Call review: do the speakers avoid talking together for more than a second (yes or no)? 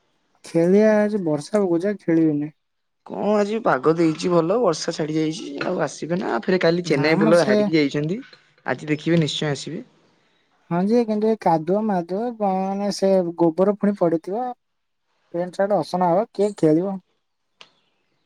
yes